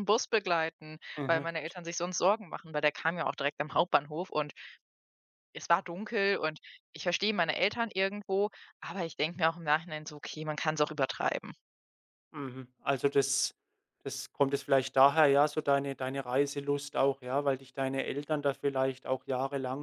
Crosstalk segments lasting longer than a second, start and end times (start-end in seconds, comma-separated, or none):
none